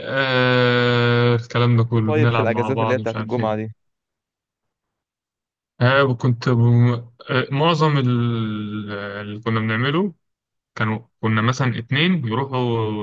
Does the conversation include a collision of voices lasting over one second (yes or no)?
yes